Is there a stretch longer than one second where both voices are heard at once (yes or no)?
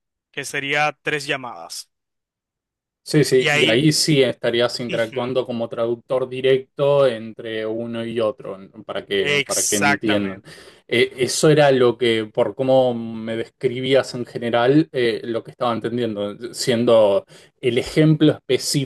yes